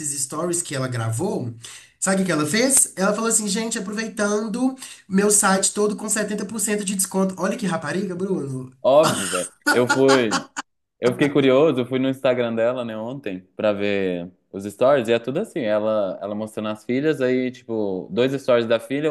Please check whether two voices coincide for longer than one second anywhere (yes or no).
no